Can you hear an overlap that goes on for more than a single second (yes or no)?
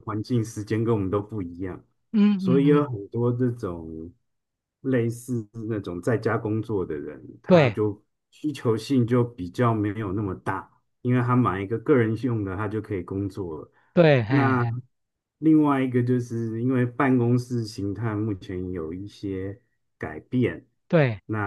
no